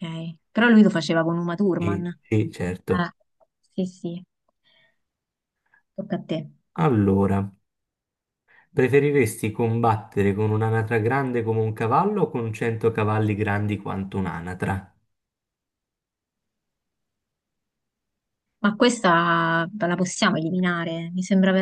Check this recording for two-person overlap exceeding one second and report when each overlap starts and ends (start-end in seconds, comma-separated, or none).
1.8-3.1